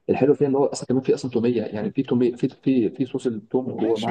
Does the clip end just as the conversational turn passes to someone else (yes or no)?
yes